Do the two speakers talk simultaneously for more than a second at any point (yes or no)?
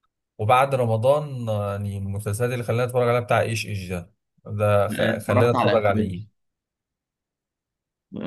yes